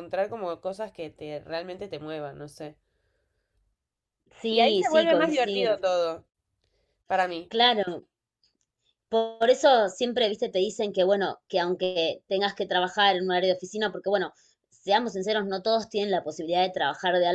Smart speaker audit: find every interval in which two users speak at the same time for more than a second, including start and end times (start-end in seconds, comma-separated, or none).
4.5-5.8